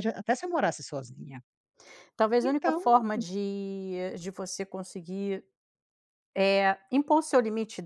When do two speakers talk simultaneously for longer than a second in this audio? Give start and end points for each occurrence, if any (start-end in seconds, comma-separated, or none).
none